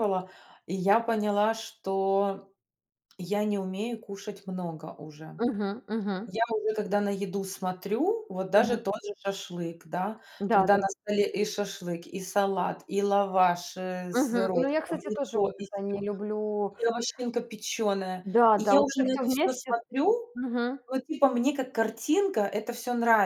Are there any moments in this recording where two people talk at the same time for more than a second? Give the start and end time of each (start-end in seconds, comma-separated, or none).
14.1-16.0, 18.2-19.8